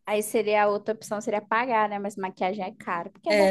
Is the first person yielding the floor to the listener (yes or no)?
yes